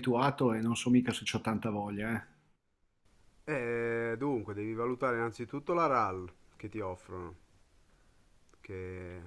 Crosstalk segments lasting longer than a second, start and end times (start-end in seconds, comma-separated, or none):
none